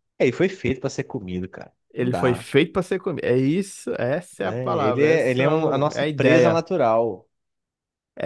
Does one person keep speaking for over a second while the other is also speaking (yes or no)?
yes